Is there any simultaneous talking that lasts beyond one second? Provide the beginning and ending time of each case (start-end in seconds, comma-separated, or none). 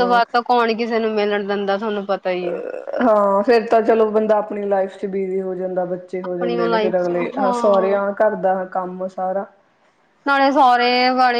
6.2-8.0